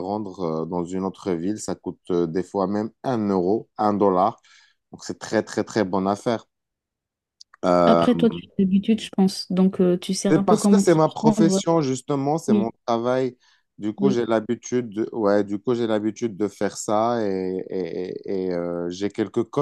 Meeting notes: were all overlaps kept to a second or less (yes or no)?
no